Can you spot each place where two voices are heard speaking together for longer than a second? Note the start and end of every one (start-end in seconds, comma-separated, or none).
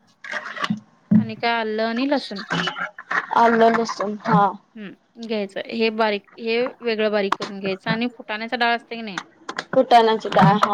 none